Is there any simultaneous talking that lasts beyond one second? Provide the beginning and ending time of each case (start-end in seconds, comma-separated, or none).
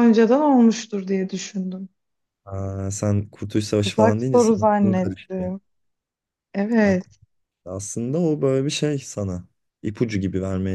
3.8-5.5